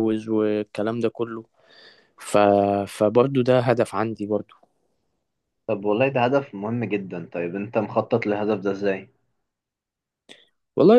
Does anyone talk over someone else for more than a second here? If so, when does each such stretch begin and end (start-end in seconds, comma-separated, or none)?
none